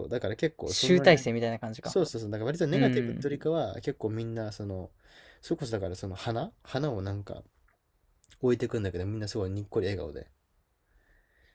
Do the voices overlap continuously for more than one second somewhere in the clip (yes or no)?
no